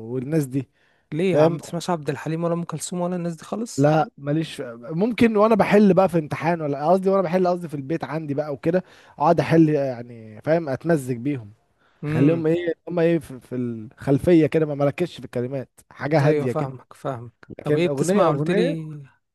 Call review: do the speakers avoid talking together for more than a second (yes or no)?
no